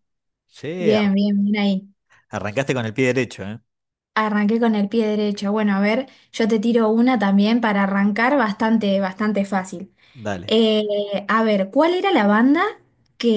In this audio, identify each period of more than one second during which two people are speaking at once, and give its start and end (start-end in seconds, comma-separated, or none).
none